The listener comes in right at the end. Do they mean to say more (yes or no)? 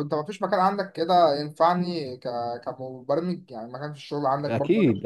yes